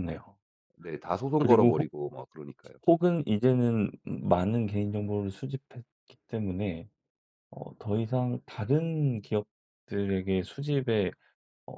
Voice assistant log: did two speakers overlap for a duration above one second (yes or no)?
no